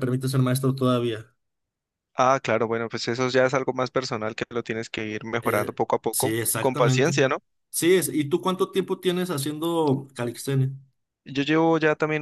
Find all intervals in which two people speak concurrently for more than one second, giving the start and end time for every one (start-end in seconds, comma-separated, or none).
5.4-7.1